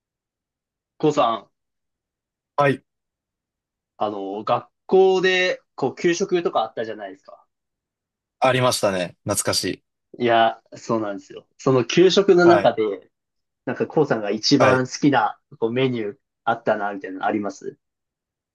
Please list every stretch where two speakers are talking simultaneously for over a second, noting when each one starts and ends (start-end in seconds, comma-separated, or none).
none